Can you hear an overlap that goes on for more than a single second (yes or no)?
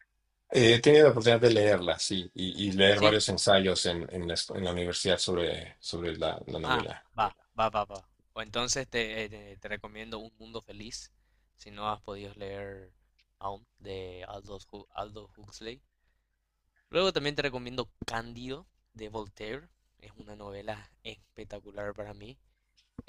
no